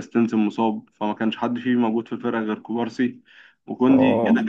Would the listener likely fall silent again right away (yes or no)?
yes